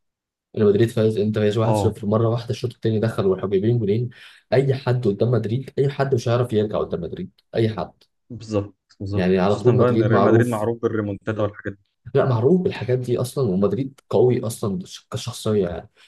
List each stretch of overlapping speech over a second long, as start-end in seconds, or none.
9.1-10.7